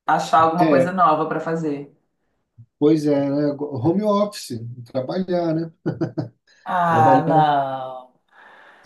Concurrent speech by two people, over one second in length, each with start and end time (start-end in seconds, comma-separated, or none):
none